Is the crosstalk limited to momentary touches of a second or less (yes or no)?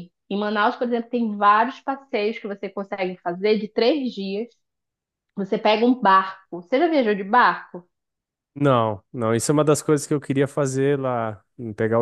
yes